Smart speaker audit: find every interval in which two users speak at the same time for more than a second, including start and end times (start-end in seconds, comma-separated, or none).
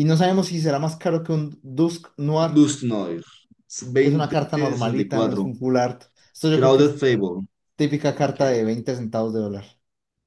4.2-5.5